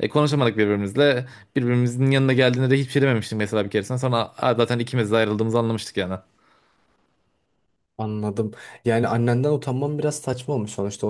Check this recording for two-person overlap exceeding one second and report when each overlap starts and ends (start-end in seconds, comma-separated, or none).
none